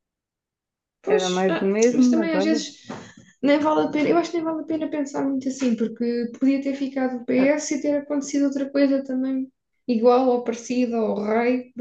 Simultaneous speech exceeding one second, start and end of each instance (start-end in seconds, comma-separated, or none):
1.1-2.6